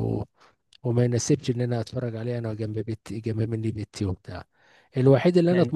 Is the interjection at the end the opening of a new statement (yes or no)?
no